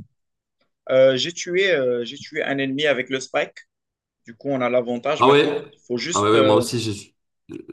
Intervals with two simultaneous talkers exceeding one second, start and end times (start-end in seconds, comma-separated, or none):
5.2-6.7